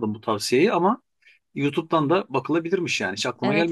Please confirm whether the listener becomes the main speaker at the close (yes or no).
yes